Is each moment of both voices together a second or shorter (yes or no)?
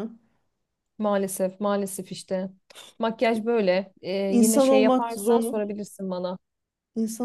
no